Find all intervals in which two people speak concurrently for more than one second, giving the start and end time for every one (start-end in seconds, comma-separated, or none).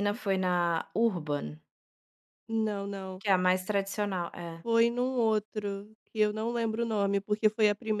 none